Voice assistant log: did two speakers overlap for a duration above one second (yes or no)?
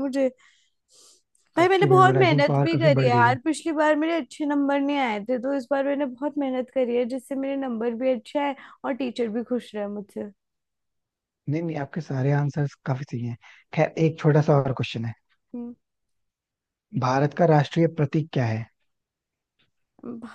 yes